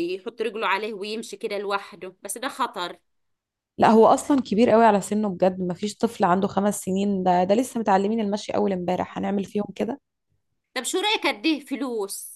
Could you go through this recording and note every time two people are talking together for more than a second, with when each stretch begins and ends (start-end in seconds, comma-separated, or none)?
none